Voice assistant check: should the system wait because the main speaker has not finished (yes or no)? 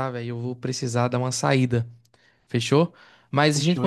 yes